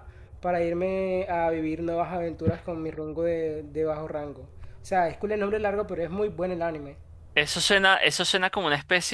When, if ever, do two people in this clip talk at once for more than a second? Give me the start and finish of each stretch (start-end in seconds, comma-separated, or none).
none